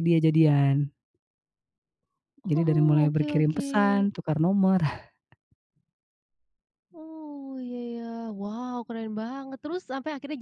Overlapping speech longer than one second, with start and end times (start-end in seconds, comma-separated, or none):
2.5-4.1